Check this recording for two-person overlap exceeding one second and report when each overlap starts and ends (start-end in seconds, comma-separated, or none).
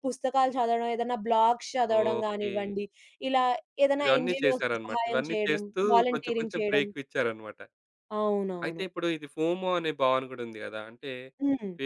4.0-6.8